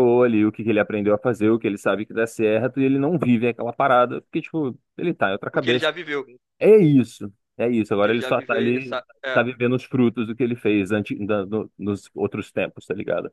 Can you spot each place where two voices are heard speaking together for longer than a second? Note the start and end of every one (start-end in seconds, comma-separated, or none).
8.0-9.4